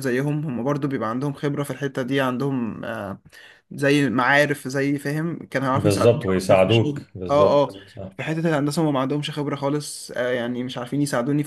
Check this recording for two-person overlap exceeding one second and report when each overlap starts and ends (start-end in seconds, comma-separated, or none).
5.7-7.7